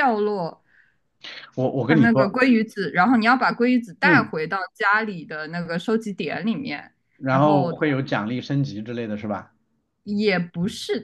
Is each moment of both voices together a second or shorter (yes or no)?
yes